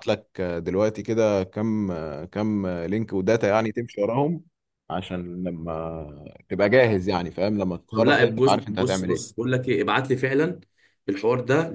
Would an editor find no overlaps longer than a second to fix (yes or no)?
no